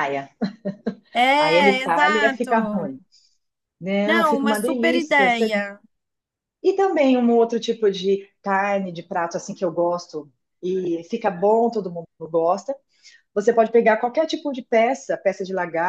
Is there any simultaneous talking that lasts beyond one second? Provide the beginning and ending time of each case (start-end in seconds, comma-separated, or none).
1.4-3.0, 4.0-5.5